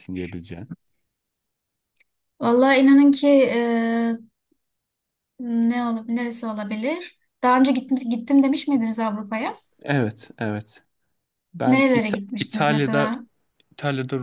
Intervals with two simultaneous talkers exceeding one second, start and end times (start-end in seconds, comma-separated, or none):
11.6-13.1